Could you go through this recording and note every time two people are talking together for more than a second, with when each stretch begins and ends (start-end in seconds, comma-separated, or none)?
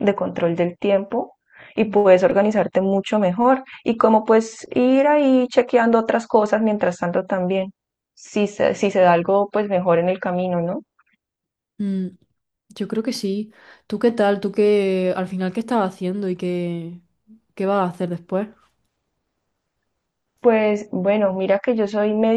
none